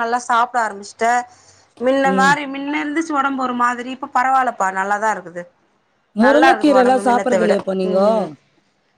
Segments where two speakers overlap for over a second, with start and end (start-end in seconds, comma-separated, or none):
6.2-7.5